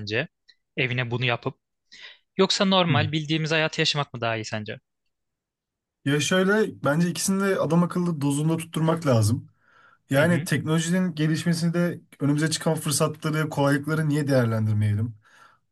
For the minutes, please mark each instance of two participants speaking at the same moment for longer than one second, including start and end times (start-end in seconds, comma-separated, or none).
none